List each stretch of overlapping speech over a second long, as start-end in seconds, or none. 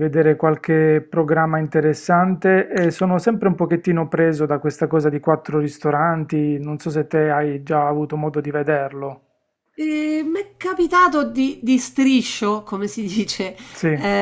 none